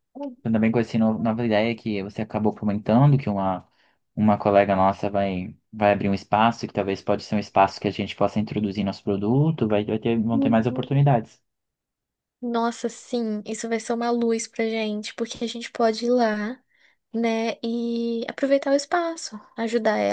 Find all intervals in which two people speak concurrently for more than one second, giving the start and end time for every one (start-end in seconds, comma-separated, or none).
none